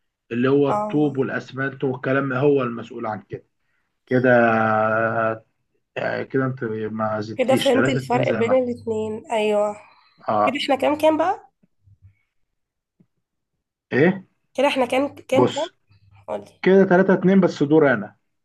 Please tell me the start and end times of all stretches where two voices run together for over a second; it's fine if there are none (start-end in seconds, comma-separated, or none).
7.3-8.6